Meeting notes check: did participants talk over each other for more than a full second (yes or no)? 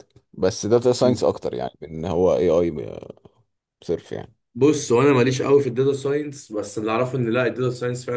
no